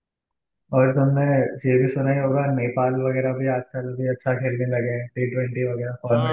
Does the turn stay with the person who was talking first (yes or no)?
no